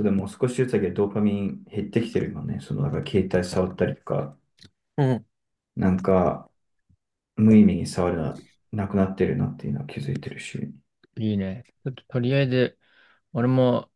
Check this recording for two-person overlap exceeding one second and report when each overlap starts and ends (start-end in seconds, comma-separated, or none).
none